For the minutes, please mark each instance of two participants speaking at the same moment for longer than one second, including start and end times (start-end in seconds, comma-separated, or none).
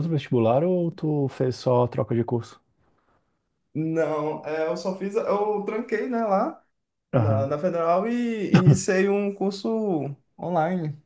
none